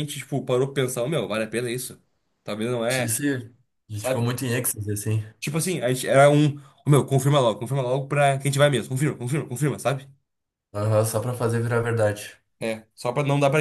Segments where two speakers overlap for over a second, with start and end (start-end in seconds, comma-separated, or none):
none